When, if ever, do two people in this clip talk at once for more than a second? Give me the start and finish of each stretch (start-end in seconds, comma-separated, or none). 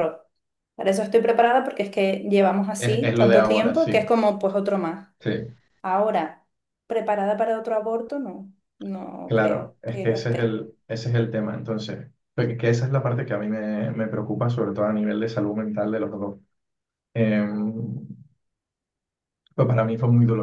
2.8-4.0, 9.2-10.6